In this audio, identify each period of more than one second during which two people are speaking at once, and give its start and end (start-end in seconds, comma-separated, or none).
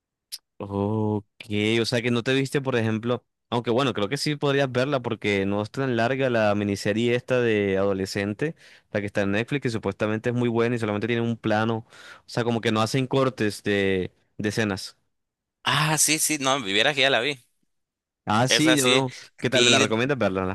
18.5-20.0